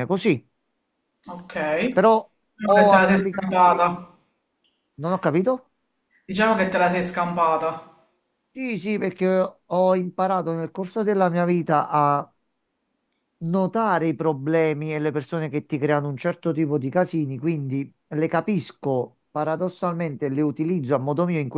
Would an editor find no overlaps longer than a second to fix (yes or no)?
no